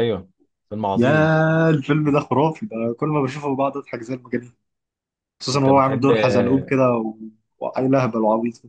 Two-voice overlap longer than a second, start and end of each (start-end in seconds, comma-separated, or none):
5.5-6.8